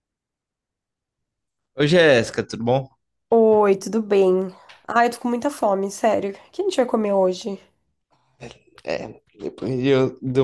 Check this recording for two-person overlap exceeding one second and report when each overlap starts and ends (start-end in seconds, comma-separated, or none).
none